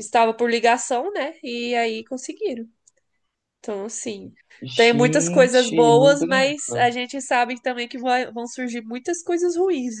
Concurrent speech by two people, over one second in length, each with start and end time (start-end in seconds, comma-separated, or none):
4.7-6.9